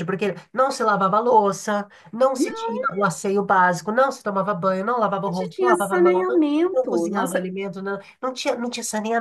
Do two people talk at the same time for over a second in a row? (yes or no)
yes